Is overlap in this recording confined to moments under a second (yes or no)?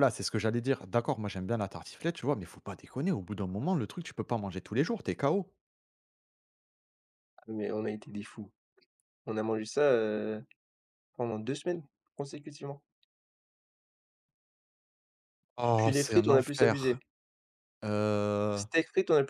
no